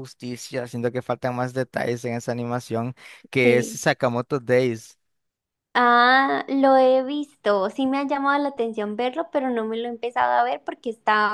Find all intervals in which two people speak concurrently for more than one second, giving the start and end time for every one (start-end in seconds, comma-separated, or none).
none